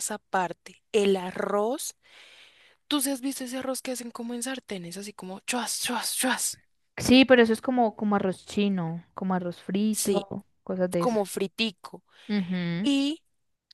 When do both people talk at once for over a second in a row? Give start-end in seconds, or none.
none